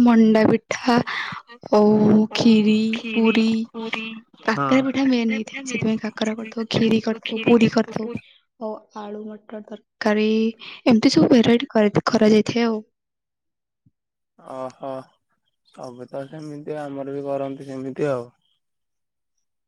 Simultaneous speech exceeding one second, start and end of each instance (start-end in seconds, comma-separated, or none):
5.7-8.1